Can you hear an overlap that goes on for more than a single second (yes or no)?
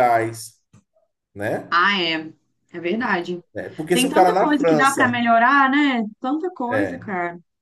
yes